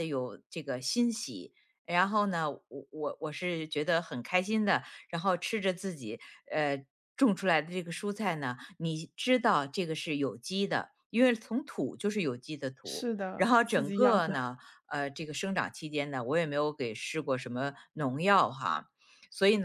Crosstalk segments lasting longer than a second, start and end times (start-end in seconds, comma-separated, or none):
12.8-14.3